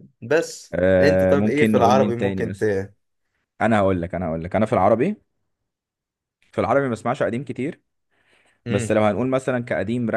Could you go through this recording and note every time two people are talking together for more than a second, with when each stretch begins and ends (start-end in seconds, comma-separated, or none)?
0.7-2.6